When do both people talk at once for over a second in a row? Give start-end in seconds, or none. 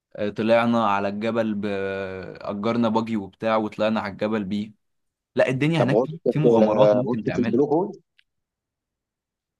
5.8-7.6